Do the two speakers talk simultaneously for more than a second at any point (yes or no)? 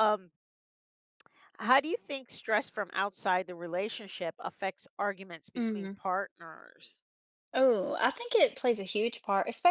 no